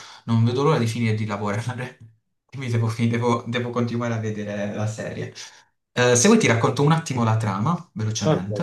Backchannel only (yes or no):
no